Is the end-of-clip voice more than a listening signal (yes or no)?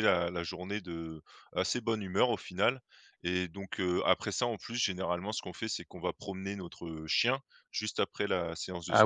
yes